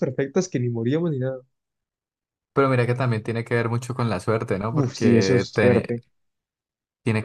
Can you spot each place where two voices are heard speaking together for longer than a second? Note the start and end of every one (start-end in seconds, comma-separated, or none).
4.7-5.9